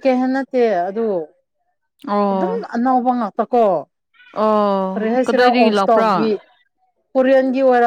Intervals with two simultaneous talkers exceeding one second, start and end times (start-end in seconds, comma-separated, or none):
4.9-6.3